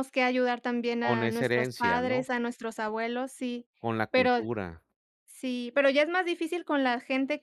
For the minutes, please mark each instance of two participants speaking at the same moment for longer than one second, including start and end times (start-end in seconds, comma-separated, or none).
1.0-2.2